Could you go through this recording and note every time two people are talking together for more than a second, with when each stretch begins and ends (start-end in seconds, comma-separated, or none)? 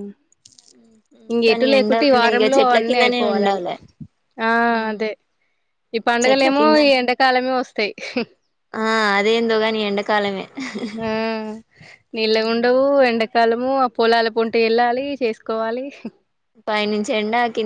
1.5-3.6